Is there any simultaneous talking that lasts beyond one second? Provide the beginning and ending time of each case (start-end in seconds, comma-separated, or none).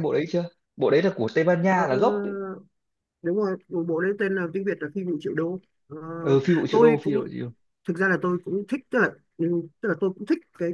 none